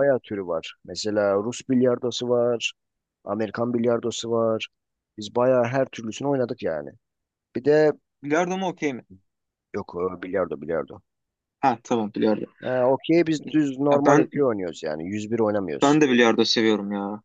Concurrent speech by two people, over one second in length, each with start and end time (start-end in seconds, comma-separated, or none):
none